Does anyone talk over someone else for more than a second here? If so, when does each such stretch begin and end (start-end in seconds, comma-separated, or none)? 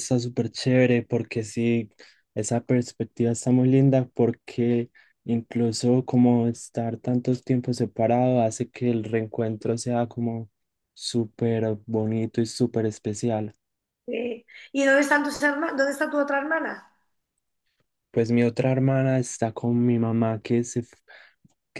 none